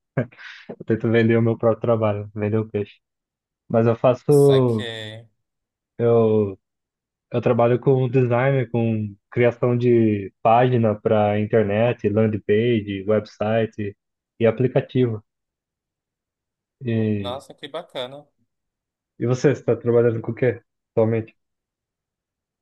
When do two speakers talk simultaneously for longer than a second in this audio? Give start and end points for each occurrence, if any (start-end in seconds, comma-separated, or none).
none